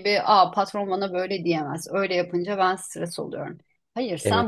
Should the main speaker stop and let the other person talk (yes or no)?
no